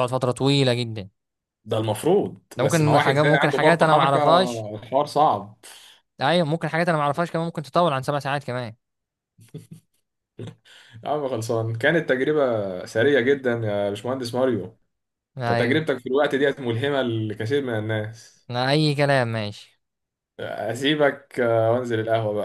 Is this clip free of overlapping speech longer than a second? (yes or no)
no